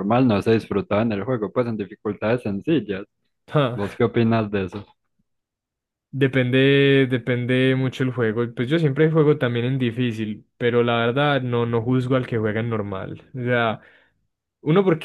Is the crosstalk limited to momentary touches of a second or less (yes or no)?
yes